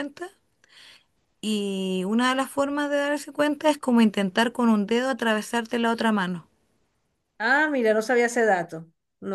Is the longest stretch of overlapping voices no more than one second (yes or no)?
yes